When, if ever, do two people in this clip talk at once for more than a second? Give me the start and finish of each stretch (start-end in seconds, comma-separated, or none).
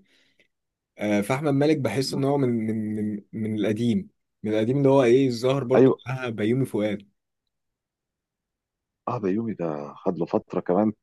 none